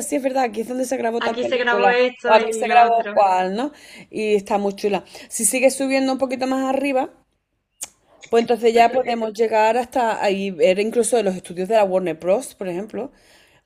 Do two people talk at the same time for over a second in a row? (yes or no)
yes